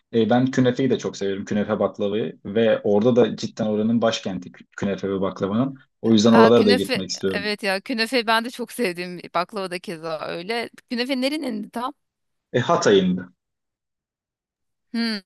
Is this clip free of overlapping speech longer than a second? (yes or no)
no